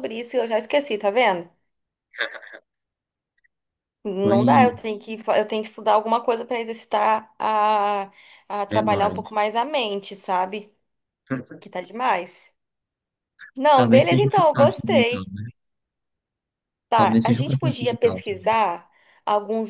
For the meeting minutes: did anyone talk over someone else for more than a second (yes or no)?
yes